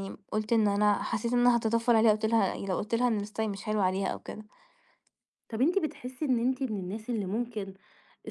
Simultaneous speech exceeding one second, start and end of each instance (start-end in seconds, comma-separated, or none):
none